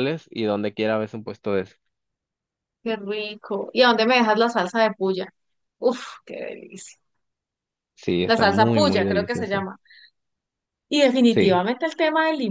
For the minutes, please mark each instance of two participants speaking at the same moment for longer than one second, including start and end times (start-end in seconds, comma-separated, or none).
8.3-9.7